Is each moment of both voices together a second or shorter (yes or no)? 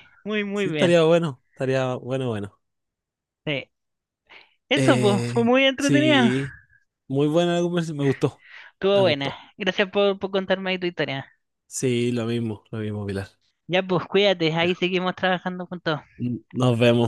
no